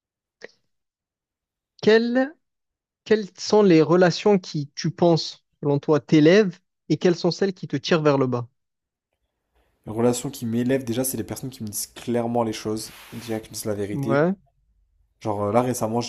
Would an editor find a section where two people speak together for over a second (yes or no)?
no